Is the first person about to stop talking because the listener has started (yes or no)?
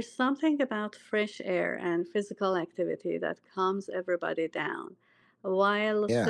no